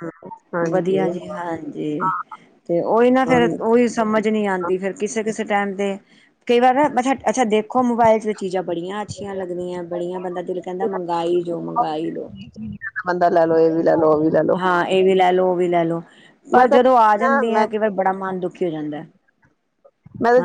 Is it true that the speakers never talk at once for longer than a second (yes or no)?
yes